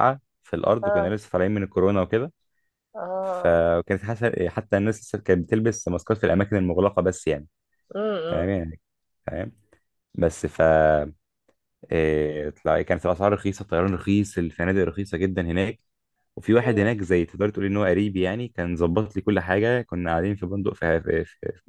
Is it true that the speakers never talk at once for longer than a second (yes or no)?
yes